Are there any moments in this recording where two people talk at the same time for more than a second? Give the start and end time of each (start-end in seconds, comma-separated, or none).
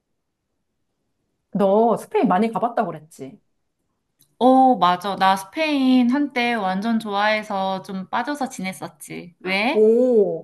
none